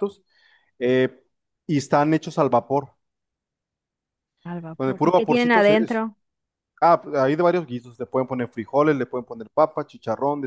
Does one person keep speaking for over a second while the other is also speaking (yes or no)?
yes